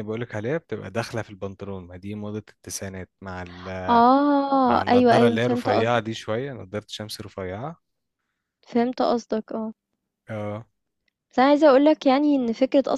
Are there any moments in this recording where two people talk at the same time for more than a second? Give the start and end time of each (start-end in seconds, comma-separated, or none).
4.6-6.1